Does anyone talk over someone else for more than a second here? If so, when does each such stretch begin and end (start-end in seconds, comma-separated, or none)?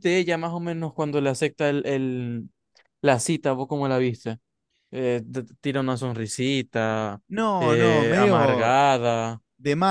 7.6-8.8